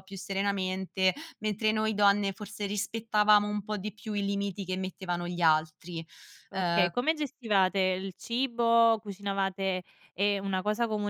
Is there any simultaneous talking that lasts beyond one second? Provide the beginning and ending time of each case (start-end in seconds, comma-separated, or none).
none